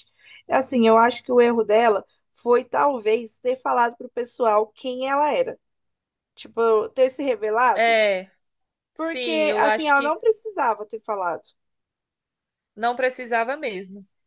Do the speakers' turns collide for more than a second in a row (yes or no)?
yes